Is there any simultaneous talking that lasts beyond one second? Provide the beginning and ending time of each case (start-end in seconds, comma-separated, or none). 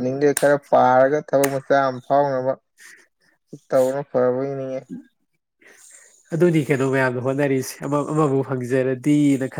none